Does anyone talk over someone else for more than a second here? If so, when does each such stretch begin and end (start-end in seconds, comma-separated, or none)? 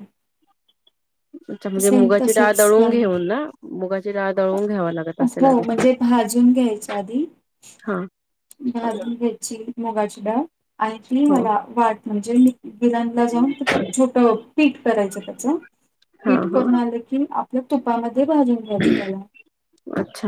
1.8-3.0